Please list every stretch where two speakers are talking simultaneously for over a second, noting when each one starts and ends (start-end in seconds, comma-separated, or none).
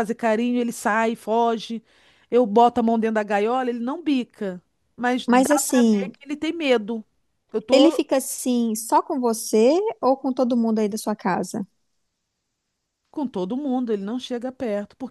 none